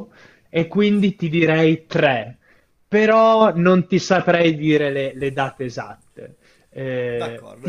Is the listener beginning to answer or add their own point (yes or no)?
yes